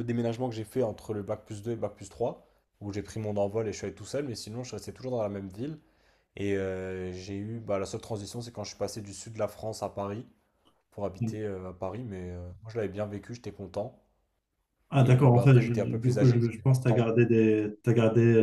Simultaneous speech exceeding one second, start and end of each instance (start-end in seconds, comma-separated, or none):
15.0-17.1